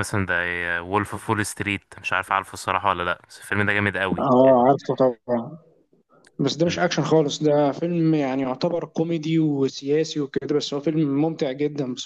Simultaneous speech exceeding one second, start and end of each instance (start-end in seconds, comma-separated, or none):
none